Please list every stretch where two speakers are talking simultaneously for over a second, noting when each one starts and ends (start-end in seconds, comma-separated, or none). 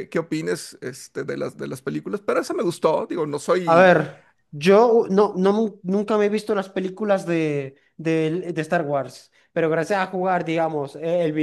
none